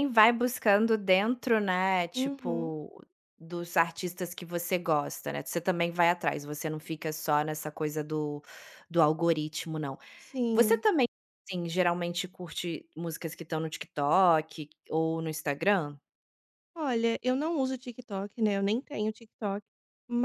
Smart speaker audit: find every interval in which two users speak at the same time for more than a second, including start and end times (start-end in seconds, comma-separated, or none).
none